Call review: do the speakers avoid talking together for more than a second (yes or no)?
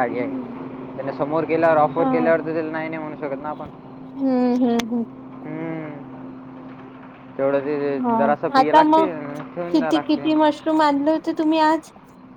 yes